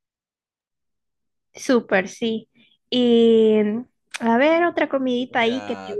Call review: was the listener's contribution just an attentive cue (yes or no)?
no